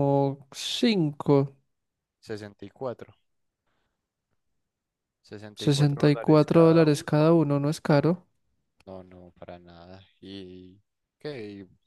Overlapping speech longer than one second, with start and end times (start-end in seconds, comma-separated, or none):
5.5-7.4